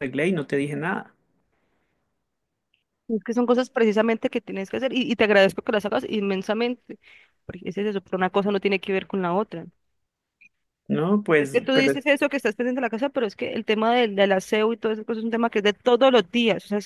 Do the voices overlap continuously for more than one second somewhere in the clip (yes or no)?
no